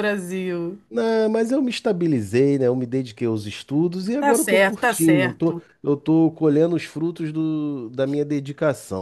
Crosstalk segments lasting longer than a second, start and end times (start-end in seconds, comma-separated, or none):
4.2-5.6